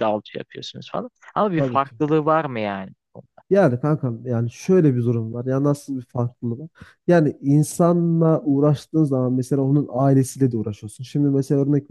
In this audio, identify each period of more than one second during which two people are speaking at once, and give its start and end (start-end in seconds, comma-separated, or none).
none